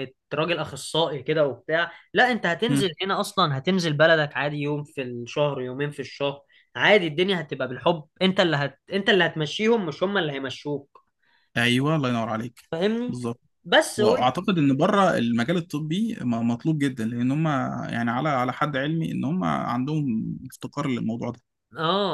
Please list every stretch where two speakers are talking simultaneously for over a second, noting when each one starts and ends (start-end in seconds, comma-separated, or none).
none